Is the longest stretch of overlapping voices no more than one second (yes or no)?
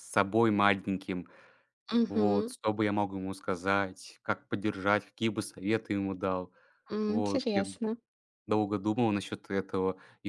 yes